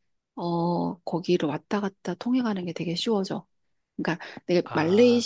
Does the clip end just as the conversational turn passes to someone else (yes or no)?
no